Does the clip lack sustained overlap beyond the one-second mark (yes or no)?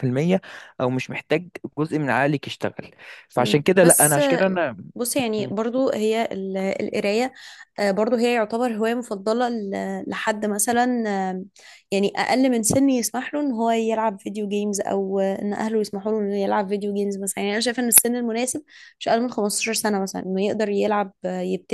no